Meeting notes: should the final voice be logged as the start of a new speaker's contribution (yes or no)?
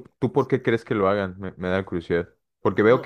no